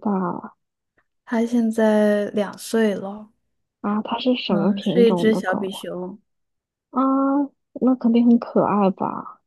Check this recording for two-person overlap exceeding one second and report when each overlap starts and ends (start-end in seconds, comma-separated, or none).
4.5-5.8